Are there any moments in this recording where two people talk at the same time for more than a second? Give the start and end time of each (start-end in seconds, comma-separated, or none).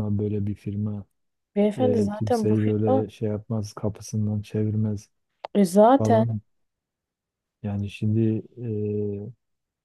1.8-3.0